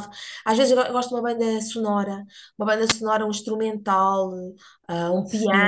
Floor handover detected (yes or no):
yes